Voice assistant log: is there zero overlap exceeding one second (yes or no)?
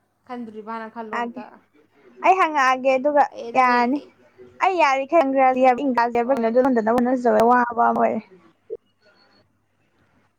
yes